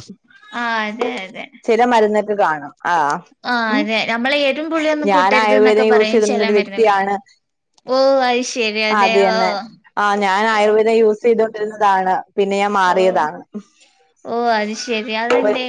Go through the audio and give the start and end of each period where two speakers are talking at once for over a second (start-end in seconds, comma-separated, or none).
5.1-6.9